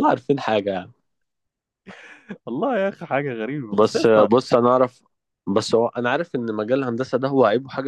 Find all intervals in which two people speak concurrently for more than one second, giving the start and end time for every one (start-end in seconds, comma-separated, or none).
none